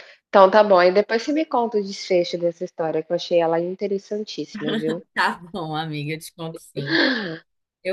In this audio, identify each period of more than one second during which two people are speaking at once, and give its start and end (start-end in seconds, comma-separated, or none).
none